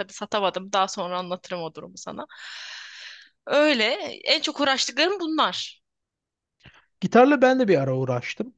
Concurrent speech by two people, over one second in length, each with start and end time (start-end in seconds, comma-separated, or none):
none